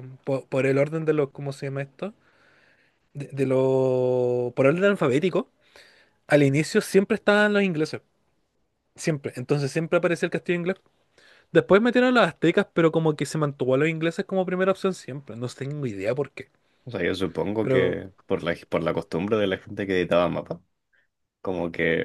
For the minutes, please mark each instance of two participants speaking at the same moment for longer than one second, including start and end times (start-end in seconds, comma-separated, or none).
none